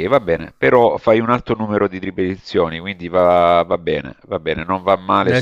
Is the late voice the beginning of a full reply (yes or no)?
no